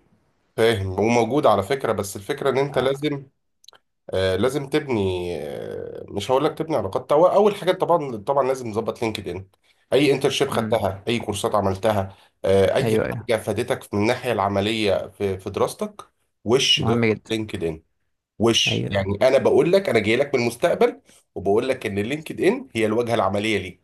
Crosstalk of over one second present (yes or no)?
no